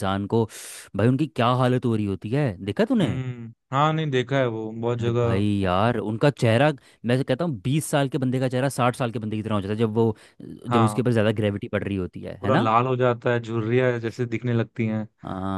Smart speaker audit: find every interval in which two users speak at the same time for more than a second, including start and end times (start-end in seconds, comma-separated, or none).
none